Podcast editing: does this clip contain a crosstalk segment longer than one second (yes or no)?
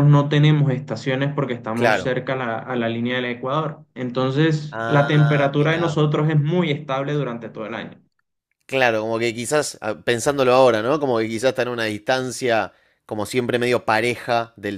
yes